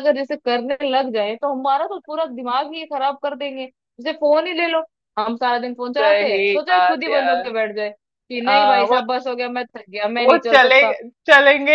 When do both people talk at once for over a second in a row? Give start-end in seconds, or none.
6.0-7.5